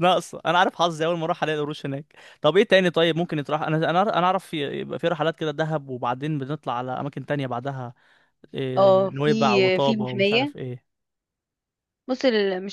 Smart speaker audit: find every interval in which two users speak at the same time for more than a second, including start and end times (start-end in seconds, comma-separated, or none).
8.8-10.5